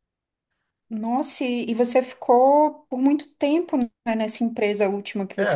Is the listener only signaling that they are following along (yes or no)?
no